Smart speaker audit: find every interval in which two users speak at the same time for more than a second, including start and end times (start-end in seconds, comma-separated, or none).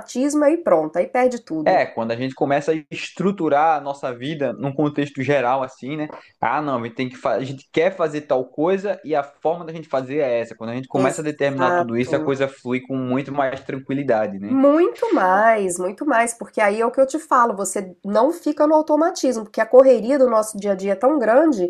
10.9-12.2